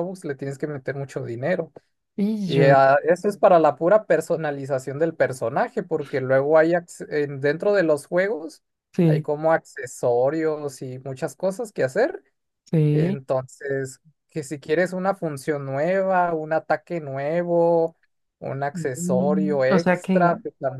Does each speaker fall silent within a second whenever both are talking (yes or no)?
no